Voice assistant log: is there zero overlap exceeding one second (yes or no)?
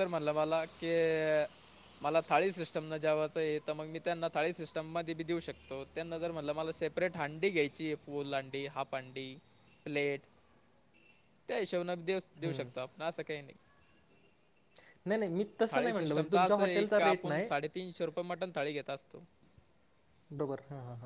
no